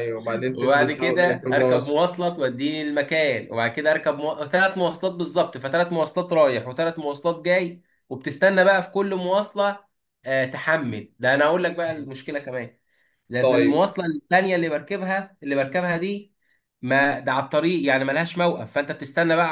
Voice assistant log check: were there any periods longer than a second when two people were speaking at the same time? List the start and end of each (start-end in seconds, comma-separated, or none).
0.6-2.0